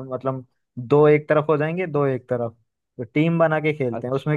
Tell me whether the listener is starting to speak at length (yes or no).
no